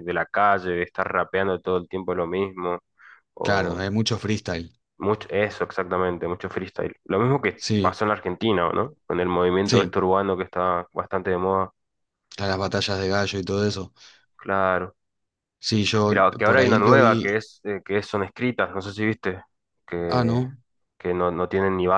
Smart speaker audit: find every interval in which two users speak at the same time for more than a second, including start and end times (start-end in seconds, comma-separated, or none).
16.1-17.4